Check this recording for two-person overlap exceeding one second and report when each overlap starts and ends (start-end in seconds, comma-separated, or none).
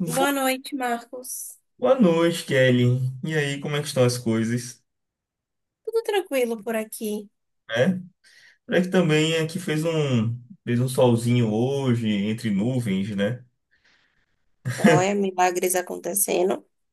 none